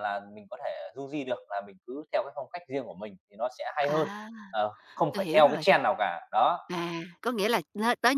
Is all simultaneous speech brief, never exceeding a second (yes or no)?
yes